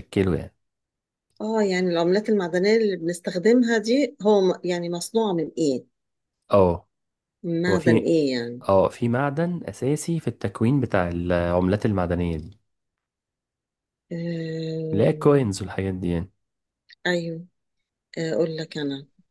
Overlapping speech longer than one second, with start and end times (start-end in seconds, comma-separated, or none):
none